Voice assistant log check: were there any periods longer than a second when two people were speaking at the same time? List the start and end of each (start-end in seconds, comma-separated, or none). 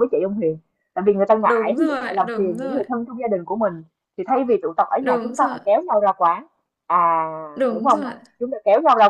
1.4-2.8